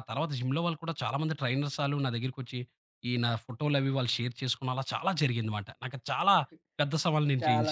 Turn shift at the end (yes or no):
yes